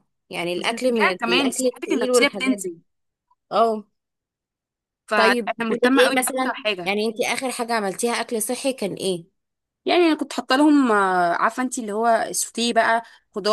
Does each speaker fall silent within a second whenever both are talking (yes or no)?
no